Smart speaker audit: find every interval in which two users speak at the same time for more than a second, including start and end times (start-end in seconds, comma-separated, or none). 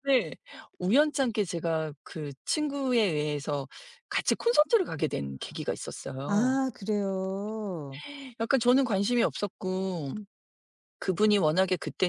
none